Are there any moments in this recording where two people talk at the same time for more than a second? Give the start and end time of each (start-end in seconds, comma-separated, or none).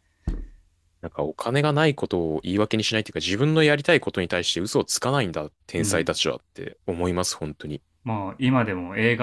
none